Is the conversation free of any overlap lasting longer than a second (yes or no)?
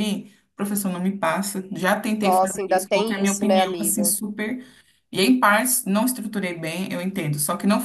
no